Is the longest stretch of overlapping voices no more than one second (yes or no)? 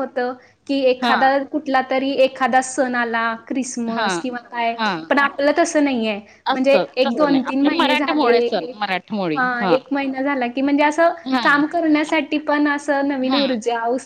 no